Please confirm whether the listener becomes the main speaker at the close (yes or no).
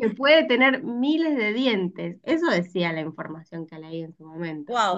yes